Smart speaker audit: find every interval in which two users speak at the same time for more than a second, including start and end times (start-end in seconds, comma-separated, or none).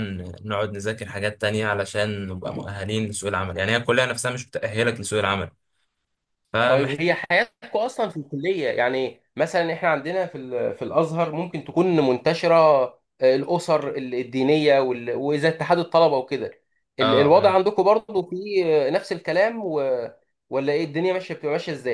none